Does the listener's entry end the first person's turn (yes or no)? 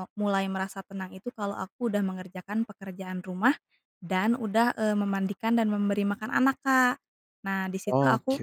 no